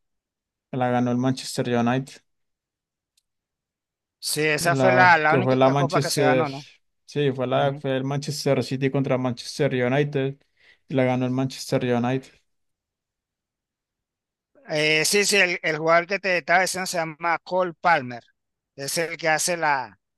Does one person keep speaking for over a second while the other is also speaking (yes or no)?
yes